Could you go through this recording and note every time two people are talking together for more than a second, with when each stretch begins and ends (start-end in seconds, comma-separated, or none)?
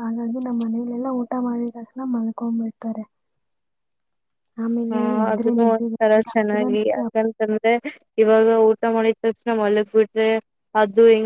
4.9-7.3